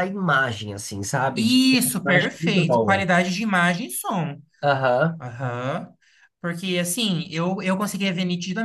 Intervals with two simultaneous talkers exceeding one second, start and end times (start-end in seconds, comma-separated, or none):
1.3-3.1